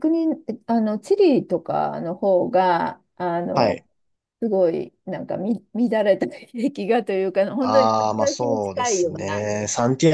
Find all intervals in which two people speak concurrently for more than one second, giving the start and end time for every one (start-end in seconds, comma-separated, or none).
7.6-9.5